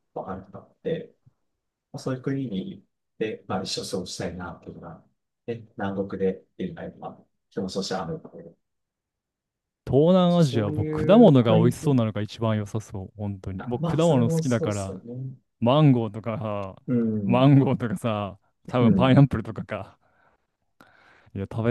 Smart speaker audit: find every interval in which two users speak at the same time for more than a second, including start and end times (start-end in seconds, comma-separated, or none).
10.3-11.9, 13.6-15.0